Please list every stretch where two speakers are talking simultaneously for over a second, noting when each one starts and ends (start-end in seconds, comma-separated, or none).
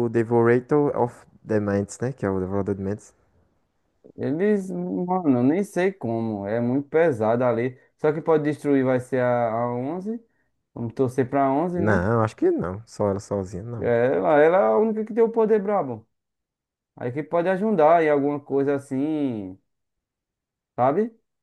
none